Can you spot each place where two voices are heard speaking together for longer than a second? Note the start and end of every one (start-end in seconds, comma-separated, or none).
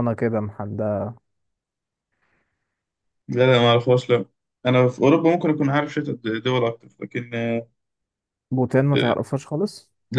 none